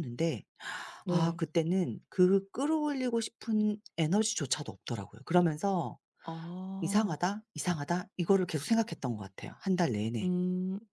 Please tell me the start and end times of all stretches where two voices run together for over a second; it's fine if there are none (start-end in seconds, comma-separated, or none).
none